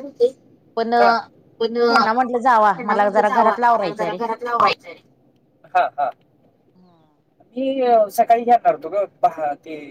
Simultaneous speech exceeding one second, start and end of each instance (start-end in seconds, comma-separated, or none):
1.9-4.2